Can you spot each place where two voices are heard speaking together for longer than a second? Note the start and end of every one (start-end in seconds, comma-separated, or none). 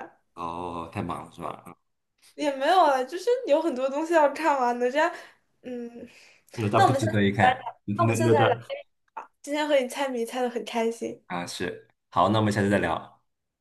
6.8-8.6